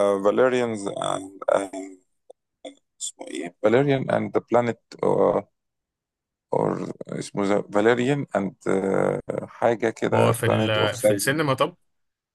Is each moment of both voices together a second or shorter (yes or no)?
no